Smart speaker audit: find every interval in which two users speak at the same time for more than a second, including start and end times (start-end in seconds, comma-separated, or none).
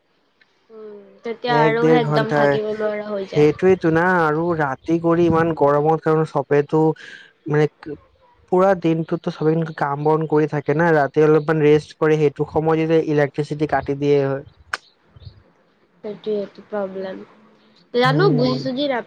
1.6-3.5